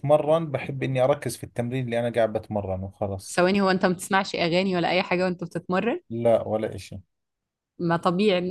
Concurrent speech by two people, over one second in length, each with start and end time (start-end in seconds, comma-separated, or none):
none